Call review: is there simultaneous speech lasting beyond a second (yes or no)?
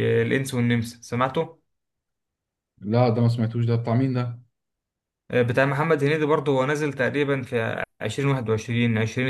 no